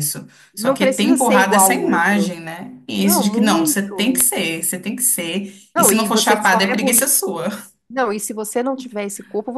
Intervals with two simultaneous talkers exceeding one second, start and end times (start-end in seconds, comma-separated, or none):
0.5-2.4, 3.0-4.3, 5.7-7.1